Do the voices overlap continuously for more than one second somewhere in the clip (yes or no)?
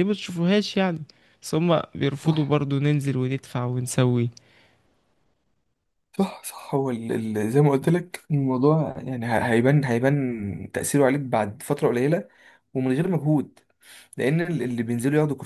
no